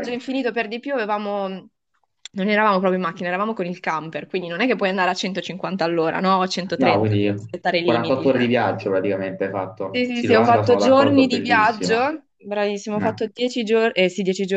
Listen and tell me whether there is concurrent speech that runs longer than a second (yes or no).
yes